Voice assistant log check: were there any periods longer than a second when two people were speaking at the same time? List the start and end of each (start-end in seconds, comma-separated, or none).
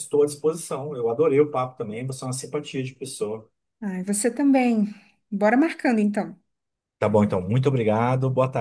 none